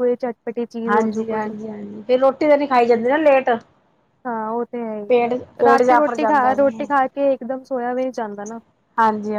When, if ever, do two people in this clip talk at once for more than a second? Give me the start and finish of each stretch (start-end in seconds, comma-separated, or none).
5.1-6.7